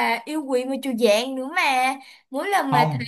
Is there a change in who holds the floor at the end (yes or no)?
no